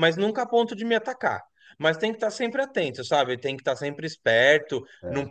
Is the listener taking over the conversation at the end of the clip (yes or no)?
no